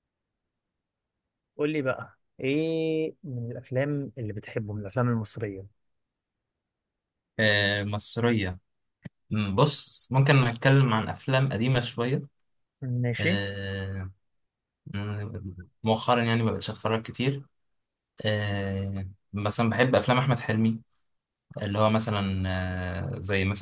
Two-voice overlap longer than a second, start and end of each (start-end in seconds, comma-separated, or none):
none